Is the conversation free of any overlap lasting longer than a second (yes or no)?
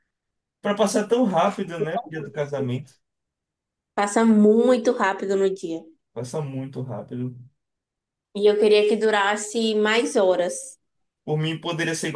yes